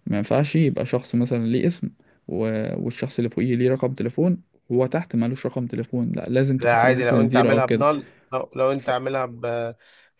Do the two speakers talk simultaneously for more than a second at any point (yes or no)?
yes